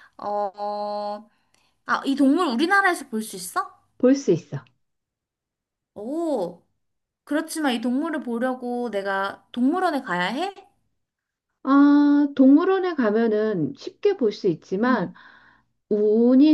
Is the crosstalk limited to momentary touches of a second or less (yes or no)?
yes